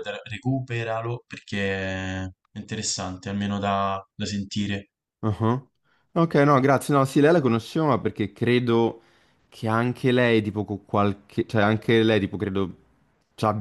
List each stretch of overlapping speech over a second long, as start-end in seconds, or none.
none